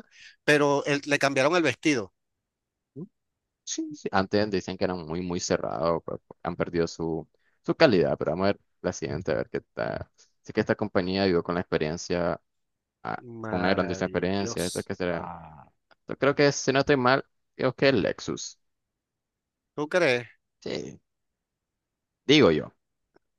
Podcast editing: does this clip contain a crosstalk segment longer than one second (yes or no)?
yes